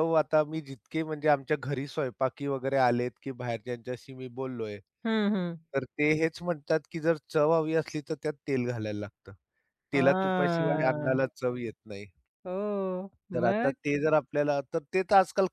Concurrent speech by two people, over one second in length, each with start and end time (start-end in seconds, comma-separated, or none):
9.9-11.2